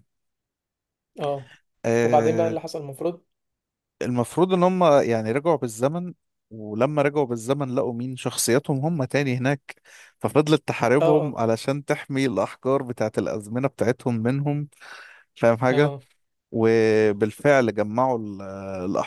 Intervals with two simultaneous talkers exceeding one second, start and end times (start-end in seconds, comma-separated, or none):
none